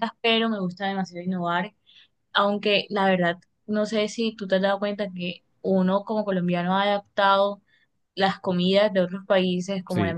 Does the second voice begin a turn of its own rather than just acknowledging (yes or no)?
no